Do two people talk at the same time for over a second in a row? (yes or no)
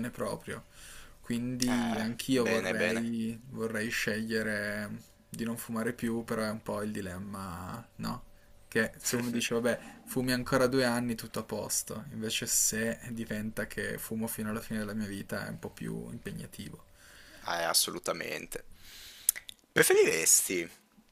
yes